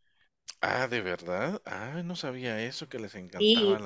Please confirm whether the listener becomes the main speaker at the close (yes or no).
yes